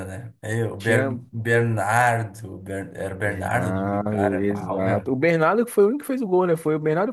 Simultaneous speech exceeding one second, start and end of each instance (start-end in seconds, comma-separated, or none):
3.2-5.1